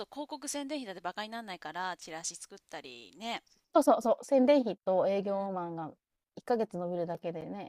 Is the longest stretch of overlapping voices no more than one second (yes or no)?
yes